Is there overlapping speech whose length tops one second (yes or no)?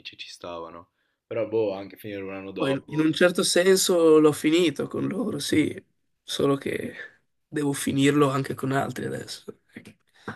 no